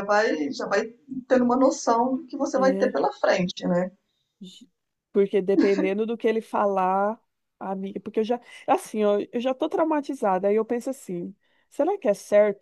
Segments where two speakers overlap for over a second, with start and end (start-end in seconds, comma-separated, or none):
none